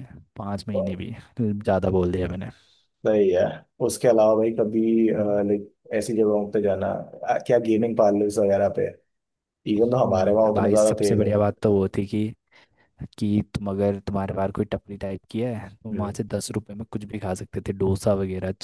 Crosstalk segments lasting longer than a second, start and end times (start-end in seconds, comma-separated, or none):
9.8-11.3